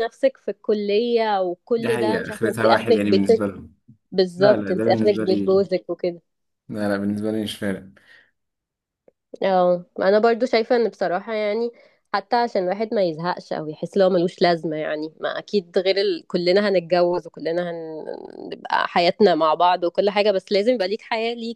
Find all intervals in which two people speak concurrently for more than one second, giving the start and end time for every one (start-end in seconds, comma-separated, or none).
1.8-3.5, 4.4-5.7